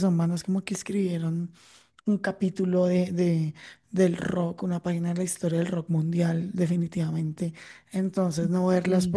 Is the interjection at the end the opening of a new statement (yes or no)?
no